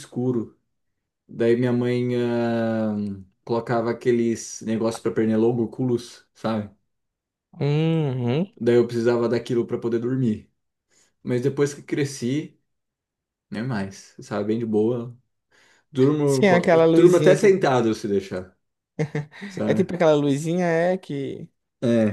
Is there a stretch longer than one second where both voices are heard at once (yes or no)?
yes